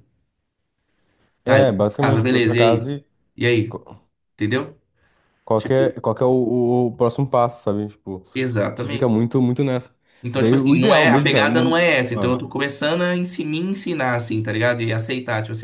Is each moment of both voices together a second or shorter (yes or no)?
no